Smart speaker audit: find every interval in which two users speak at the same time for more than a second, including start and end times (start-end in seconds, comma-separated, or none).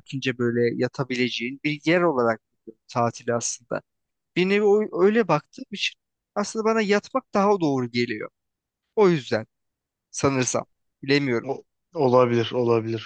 none